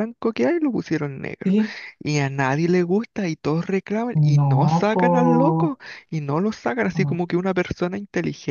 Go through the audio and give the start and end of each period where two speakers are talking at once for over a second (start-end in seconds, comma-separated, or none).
4.1-5.8